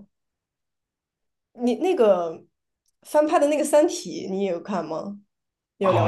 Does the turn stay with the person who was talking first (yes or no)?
no